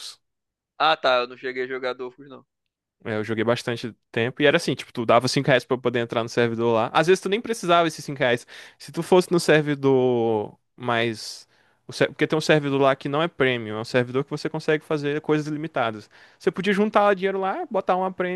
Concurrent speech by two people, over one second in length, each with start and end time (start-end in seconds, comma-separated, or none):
none